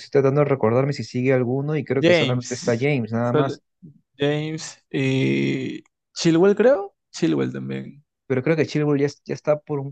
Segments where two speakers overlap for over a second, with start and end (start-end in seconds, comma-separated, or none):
1.9-3.6